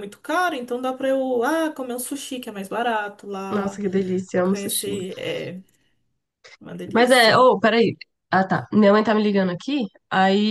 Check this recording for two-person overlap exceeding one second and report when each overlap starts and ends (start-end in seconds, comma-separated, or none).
none